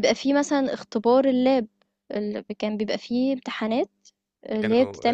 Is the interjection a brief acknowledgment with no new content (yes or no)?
no